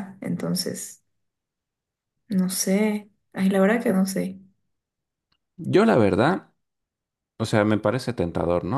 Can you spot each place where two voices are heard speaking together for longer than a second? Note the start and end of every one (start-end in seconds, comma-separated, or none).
none